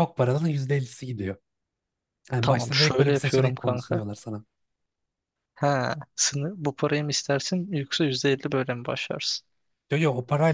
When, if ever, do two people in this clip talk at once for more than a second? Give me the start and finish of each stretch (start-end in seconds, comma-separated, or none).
2.4-4.0